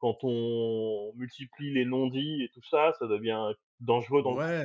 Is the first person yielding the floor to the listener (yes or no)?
yes